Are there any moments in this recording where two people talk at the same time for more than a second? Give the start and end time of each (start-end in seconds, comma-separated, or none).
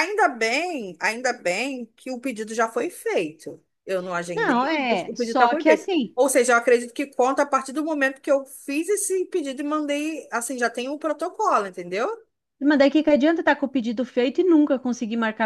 4.3-6.2